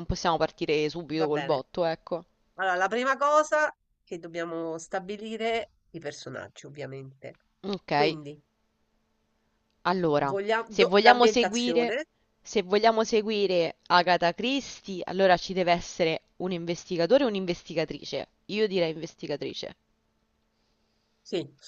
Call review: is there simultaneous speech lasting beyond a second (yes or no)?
yes